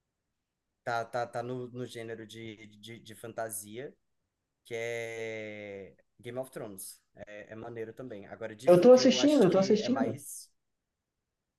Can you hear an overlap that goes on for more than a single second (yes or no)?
yes